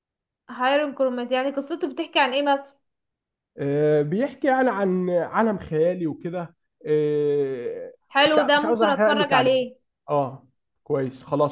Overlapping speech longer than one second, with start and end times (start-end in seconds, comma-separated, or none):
8.3-9.6